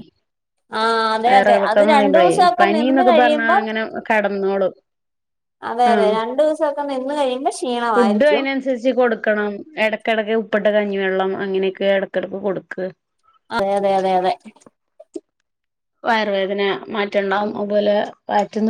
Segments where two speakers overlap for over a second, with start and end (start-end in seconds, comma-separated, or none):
1.3-3.6